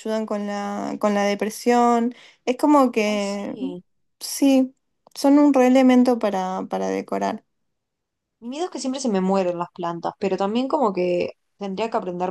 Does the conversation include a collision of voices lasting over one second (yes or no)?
no